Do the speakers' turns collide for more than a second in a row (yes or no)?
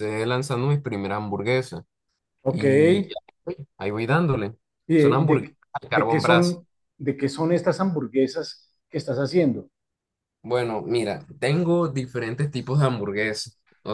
yes